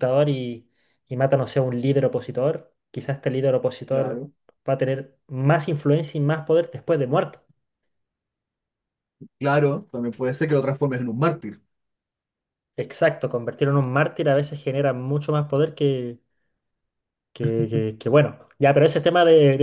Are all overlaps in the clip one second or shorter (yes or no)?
yes